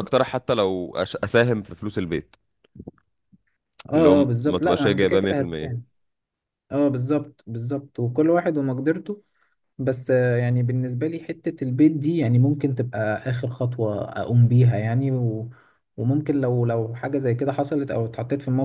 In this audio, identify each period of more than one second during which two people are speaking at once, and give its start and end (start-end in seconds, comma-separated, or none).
4.0-5.8